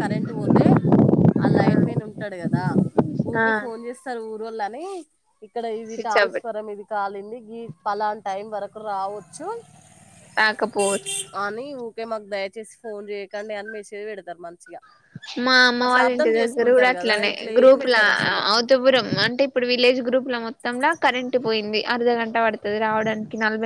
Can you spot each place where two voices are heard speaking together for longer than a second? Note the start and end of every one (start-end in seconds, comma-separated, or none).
15.8-18.0